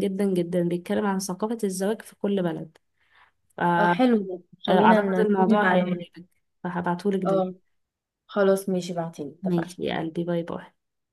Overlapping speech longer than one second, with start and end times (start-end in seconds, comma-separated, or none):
4.7-6.1